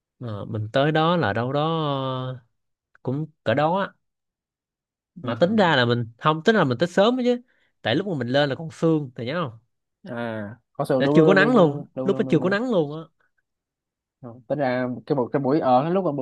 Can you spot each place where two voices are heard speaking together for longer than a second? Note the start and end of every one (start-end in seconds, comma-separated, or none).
11.0-12.6